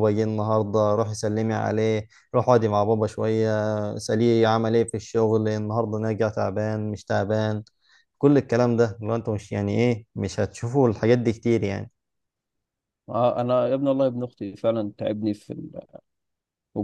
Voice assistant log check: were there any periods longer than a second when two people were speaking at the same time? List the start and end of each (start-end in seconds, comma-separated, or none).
none